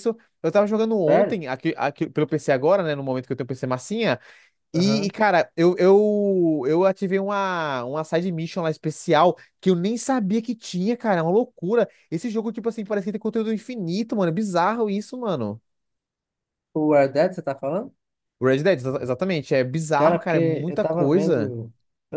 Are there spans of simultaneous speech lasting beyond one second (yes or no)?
yes